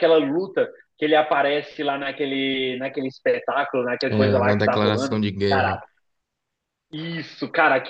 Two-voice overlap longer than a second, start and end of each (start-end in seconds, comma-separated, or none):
4.1-5.8